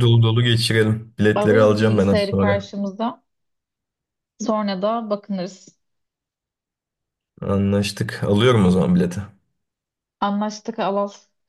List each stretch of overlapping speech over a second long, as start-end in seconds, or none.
1.3-2.7